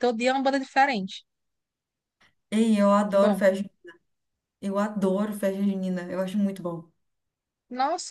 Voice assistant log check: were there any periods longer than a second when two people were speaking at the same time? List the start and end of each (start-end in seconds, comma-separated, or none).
none